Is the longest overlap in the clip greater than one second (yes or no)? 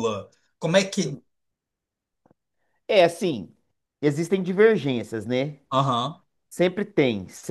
no